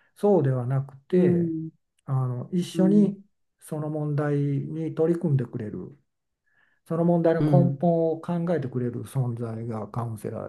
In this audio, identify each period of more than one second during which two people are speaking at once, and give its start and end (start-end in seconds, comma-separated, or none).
none